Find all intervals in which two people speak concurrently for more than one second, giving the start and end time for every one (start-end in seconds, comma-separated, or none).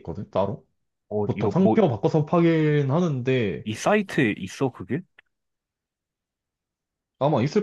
none